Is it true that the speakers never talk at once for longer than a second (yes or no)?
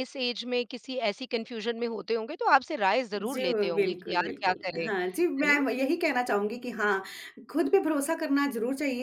no